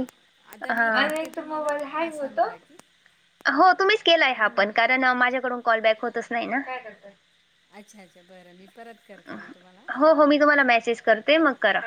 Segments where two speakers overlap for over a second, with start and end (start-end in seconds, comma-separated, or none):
0.5-2.5